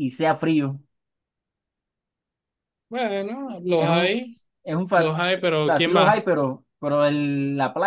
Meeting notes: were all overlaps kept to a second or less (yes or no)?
no